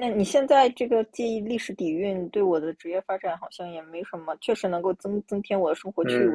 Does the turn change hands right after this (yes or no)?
yes